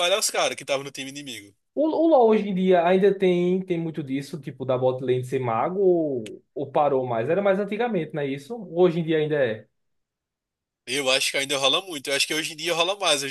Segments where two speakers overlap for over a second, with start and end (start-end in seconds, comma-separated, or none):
none